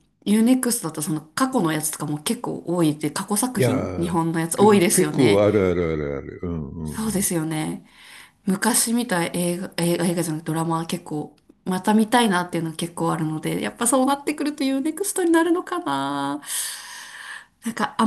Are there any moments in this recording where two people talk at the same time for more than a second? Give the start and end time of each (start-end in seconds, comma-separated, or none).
3.5-5.4